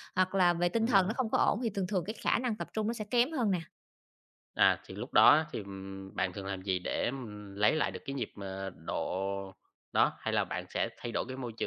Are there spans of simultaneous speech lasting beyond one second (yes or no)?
no